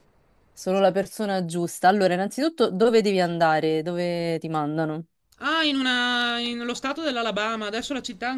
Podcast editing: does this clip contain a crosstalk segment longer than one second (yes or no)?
no